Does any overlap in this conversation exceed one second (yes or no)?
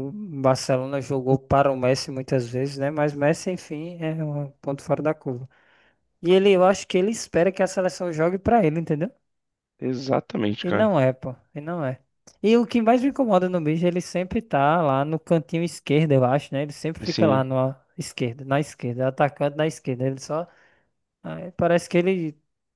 no